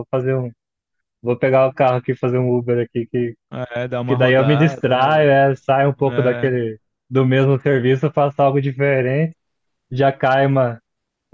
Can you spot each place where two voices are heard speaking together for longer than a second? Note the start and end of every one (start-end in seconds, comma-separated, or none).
4.1-5.3